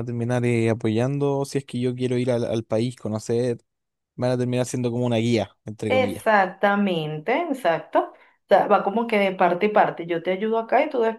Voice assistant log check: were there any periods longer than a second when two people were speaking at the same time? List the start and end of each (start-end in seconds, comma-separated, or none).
none